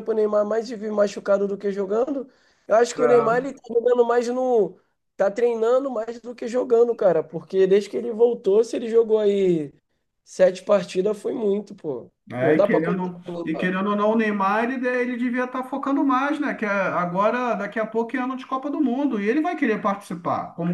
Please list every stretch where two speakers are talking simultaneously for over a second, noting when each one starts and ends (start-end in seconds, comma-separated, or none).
12.3-13.8